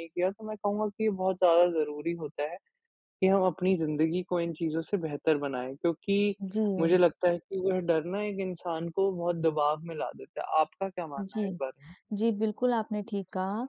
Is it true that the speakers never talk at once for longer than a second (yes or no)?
yes